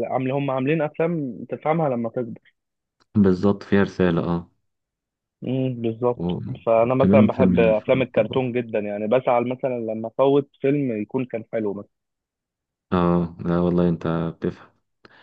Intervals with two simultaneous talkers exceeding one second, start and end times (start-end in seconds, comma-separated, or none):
6.8-8.5